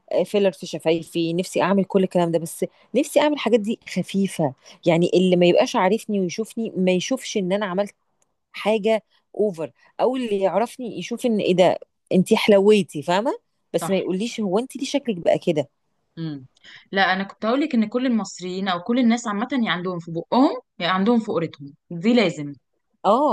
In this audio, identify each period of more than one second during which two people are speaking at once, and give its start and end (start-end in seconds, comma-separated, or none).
none